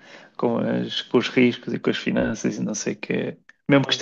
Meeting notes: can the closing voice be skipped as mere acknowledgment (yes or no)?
yes